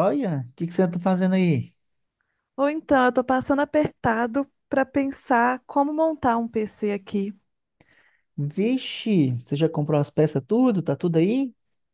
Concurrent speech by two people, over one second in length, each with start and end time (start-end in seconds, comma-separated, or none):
none